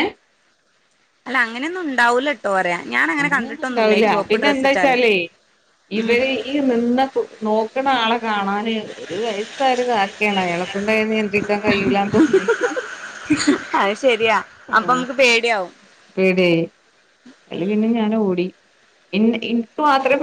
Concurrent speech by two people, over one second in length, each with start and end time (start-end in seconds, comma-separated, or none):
3.2-5.0